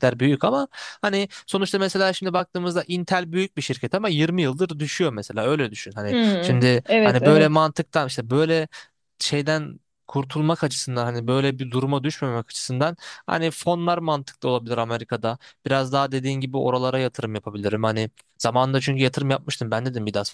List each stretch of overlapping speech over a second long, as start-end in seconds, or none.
6.1-7.7